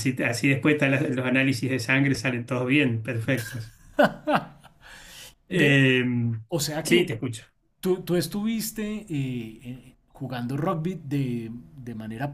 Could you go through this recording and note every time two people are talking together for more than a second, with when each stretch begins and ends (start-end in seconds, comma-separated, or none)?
none